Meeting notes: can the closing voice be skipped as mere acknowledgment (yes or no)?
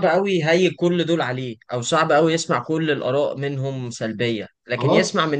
yes